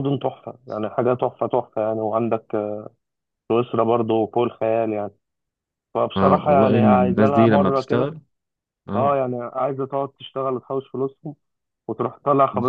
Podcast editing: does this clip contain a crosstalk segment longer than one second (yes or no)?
yes